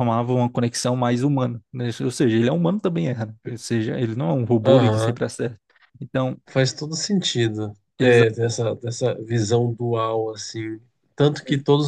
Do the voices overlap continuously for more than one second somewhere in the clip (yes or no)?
no